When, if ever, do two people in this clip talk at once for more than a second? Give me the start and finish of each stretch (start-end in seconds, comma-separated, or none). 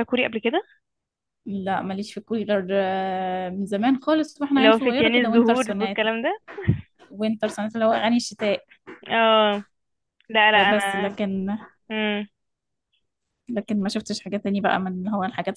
4.6-6.1